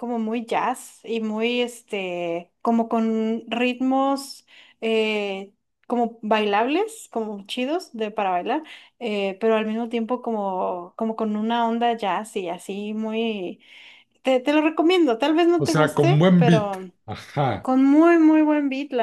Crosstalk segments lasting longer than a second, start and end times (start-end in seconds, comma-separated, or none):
15.6-16.8